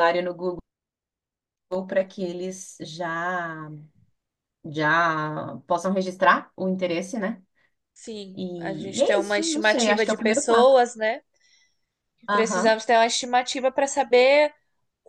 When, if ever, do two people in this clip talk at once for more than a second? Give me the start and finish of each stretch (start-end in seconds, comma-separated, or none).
8.3-10.7